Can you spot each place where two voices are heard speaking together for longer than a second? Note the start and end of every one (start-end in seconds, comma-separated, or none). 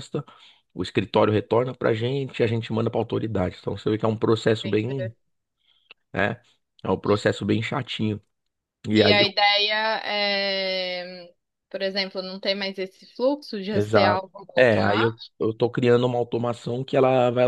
13.7-15.3